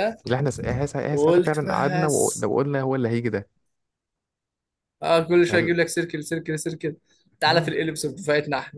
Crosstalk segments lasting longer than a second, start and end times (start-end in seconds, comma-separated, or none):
1.1-2.5